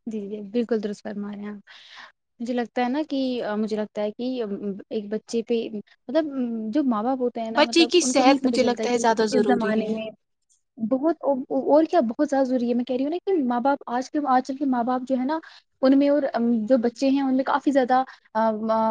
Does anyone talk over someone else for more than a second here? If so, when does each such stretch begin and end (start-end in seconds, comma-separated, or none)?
7.6-10.0